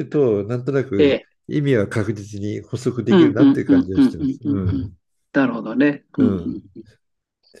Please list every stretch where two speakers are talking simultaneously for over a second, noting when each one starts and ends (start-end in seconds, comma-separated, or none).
3.1-4.9